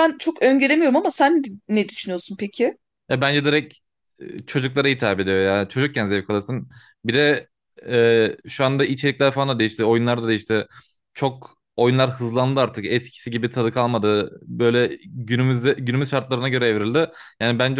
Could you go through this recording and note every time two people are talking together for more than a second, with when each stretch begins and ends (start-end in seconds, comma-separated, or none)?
none